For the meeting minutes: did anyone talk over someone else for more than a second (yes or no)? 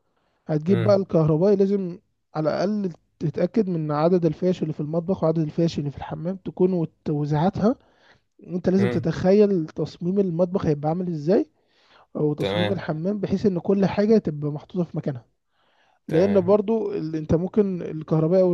no